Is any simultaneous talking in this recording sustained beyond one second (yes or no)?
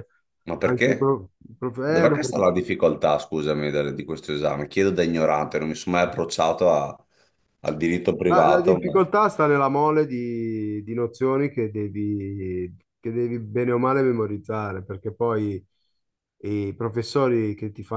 no